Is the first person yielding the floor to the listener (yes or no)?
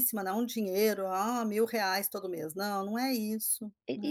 yes